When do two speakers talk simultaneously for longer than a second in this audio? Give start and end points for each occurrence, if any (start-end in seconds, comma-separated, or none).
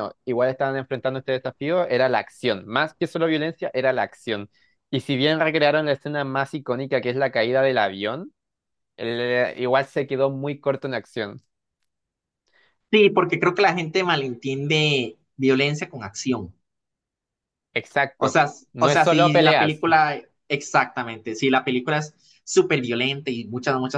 18.2-19.8